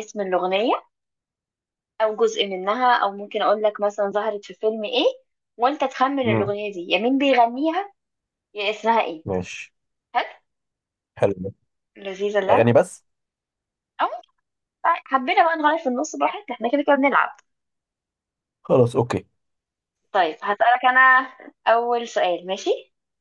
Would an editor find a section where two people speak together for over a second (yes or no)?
no